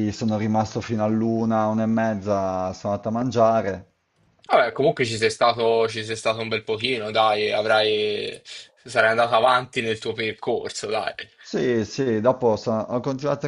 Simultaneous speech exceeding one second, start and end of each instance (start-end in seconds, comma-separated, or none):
none